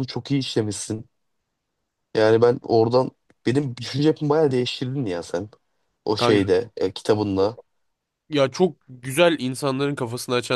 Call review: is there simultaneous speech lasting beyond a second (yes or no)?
no